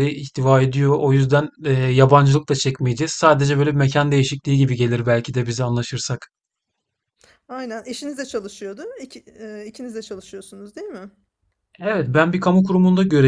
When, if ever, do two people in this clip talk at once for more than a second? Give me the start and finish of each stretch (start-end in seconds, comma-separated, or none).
none